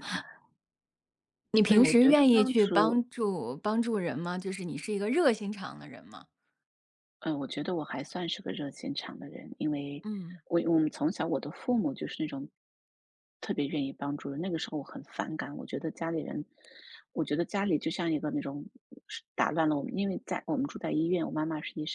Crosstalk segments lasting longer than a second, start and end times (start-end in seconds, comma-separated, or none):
1.6-3.0